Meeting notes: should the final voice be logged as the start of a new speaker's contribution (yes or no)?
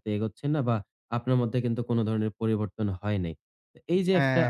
no